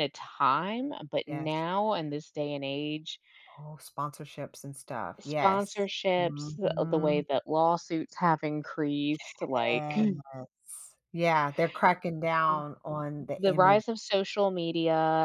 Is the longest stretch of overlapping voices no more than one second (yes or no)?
no